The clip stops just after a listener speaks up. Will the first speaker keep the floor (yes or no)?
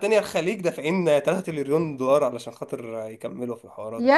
no